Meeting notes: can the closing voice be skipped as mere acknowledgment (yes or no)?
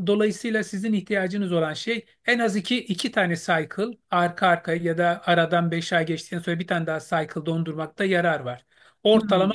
yes